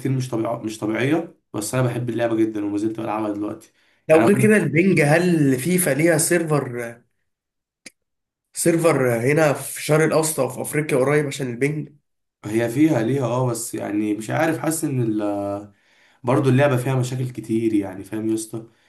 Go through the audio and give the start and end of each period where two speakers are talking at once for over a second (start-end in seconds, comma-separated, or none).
none